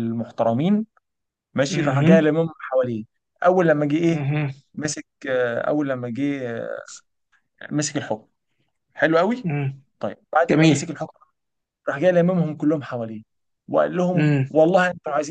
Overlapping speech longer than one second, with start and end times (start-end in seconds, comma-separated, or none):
none